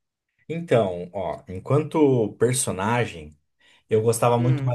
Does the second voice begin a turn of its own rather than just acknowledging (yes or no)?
no